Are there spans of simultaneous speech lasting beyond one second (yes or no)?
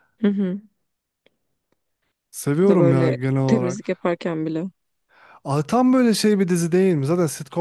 yes